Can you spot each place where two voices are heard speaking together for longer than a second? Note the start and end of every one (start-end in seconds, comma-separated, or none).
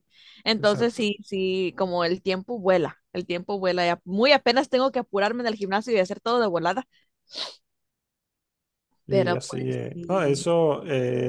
9.1-10.5